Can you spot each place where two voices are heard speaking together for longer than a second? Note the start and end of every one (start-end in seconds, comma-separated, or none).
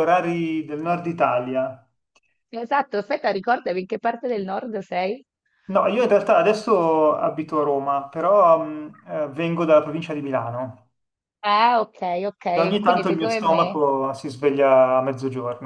12.5-13.8